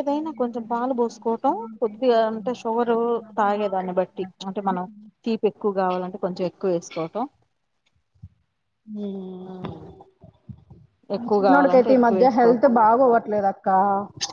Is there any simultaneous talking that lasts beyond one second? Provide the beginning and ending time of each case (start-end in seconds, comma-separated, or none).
11.2-12.7